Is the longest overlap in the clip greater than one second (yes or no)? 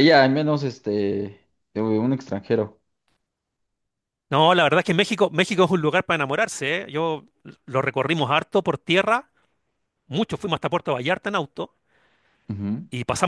no